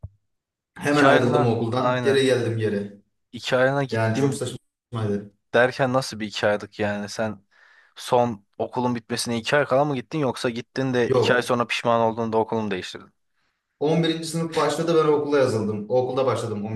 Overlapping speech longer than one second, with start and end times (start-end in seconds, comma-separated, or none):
0.8-2.2